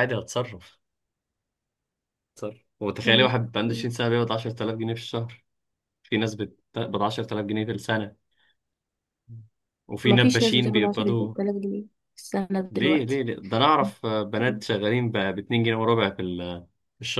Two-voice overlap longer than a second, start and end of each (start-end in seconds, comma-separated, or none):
10.1-11.3